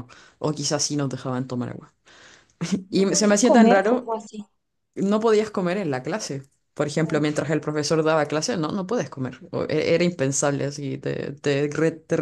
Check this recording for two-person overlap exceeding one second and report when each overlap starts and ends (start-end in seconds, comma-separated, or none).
2.9-4.1